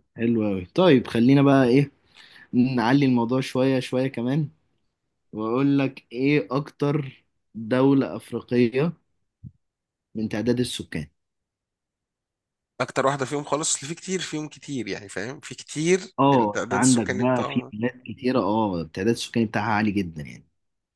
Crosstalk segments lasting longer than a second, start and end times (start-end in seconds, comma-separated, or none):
16.2-17.7